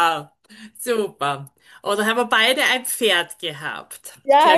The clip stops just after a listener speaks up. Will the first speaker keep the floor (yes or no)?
no